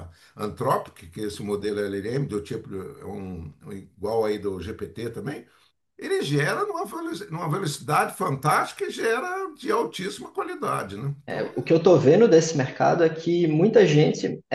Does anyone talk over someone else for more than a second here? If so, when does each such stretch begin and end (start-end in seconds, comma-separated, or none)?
none